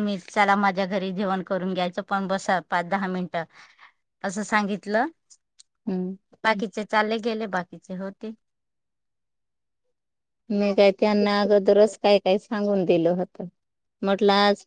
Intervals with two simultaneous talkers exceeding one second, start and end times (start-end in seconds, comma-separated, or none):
none